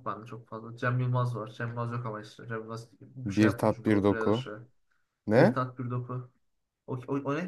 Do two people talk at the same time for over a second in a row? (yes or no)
yes